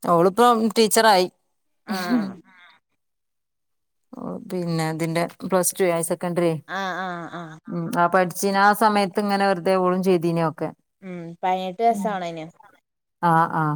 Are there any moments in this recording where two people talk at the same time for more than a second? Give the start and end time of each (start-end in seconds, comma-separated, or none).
none